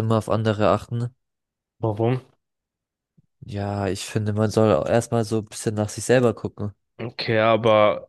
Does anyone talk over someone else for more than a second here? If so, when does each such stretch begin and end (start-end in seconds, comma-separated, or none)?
none